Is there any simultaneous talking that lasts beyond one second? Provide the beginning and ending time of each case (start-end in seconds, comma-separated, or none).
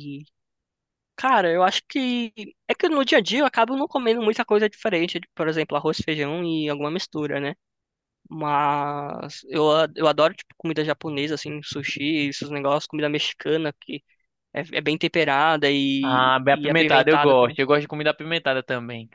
16.0-17.6